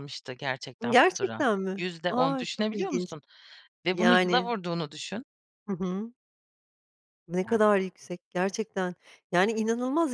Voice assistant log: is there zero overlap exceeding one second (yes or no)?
no